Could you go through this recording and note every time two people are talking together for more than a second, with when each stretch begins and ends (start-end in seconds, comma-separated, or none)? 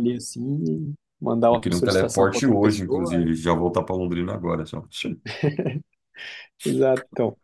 1.5-3.3